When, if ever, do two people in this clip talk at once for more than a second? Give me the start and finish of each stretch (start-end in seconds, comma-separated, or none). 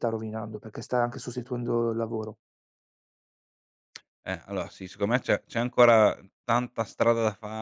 none